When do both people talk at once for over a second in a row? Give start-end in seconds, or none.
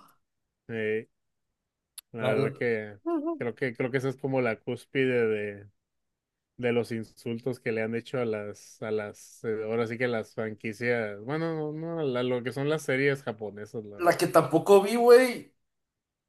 none